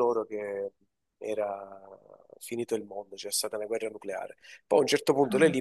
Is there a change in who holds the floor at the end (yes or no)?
no